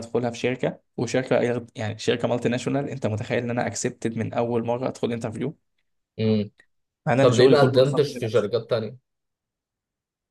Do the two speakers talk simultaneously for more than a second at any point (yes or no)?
yes